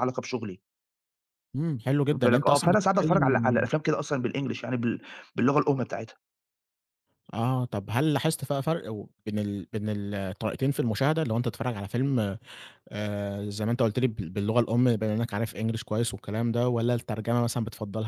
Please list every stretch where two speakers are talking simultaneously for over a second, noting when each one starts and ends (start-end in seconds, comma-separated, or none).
2.0-3.7